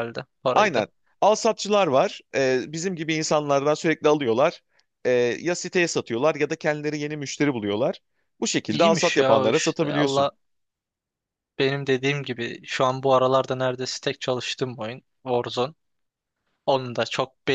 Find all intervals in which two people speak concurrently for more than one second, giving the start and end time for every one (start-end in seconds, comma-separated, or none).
8.7-10.3